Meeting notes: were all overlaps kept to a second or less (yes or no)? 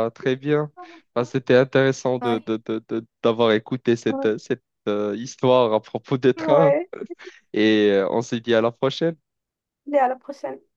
yes